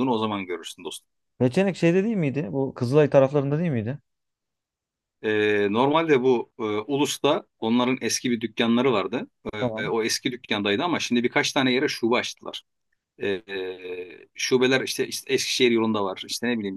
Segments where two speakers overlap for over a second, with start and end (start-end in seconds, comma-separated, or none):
none